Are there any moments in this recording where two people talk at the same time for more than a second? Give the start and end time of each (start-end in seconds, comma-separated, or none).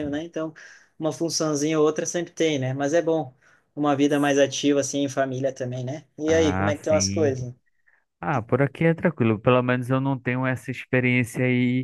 6.3-7.5